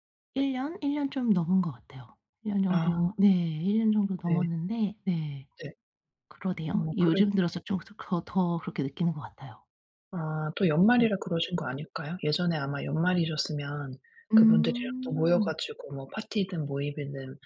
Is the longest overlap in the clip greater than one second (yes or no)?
yes